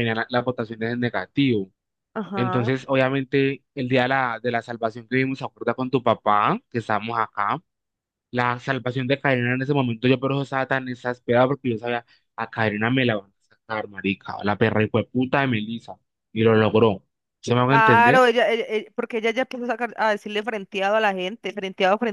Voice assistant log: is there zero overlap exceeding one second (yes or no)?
yes